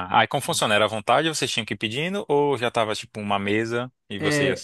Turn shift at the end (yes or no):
yes